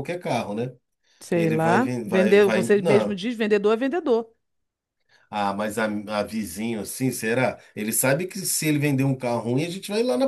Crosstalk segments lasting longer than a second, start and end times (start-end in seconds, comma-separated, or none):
1.3-3.2